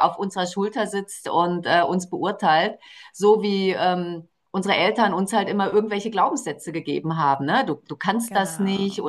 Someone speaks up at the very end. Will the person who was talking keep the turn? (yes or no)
yes